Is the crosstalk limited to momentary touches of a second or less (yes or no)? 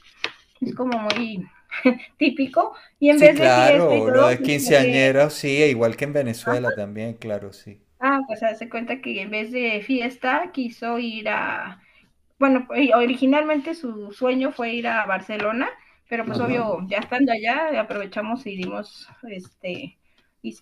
no